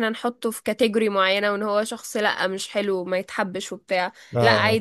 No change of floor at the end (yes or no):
yes